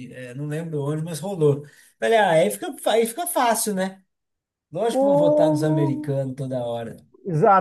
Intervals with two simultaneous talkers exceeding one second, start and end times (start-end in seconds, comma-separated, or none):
4.9-6.1